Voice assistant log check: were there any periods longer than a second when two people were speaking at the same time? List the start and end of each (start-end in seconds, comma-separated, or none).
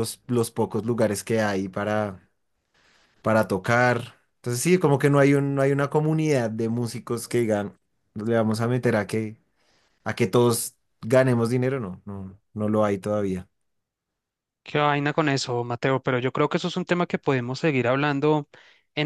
none